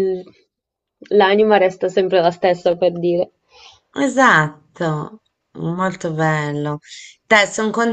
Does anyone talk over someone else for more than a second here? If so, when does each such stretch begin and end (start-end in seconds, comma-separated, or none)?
none